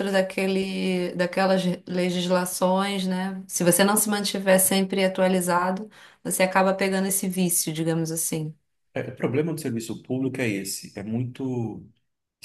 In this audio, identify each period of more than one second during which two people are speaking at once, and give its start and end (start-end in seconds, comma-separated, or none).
none